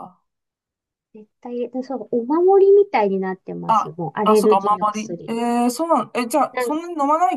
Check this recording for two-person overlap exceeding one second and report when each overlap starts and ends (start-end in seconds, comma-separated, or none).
3.7-5.3